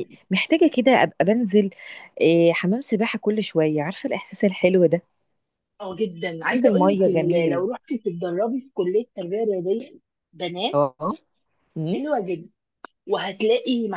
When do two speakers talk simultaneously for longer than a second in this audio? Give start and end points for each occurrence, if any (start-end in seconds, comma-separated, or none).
6.5-7.7